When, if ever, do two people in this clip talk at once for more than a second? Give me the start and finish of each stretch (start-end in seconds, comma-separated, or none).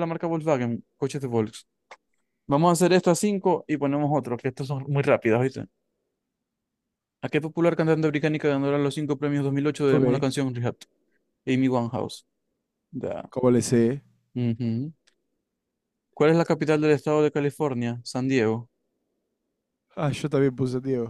none